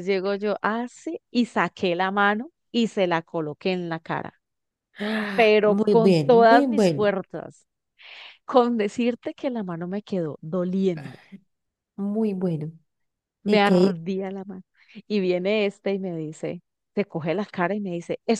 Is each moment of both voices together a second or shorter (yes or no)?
no